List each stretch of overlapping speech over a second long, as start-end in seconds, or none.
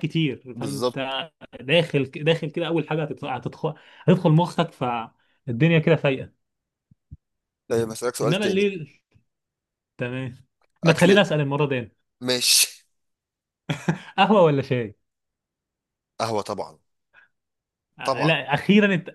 none